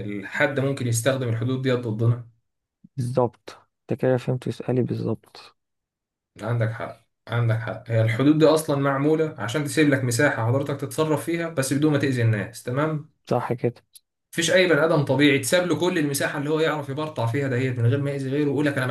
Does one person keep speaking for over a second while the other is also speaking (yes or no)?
no